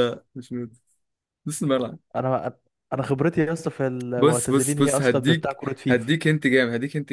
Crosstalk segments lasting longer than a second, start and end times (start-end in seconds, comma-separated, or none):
4.2-6.1